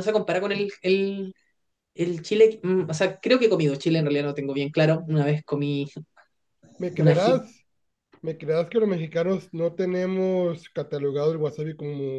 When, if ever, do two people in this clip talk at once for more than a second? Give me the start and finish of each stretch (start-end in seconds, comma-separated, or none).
none